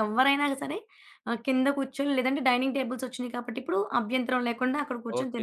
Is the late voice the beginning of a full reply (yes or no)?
yes